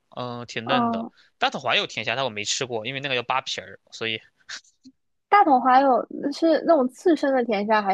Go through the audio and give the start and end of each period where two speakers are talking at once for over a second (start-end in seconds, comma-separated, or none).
none